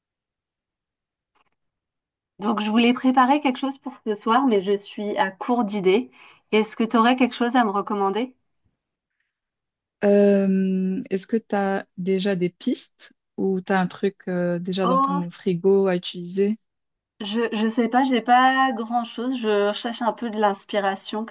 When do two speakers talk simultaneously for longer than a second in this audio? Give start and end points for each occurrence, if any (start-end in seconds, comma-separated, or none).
none